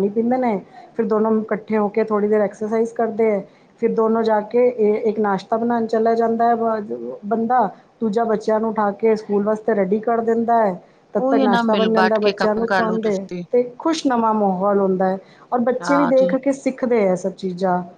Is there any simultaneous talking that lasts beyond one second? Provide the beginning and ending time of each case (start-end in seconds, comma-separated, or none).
11.2-13.4